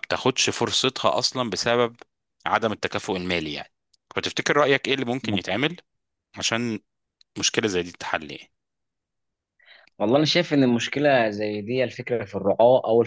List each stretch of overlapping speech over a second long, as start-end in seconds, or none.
none